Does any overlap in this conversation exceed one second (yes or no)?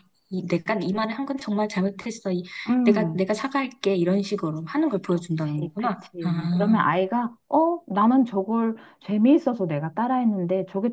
yes